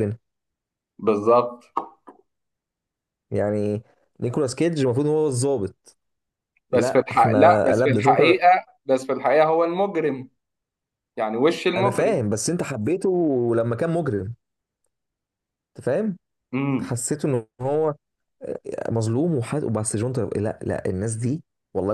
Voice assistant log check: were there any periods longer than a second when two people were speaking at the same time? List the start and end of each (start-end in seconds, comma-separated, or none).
6.7-8.4